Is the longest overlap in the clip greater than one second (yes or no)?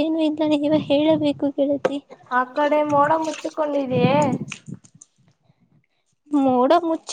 no